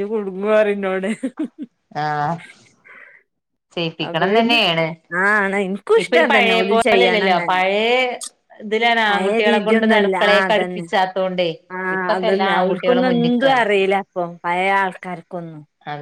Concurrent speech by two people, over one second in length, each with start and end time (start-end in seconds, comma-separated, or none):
6.0-7.6, 9.1-10.8